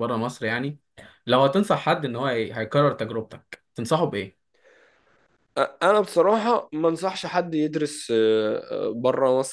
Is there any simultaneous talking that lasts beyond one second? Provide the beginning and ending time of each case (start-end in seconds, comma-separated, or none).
none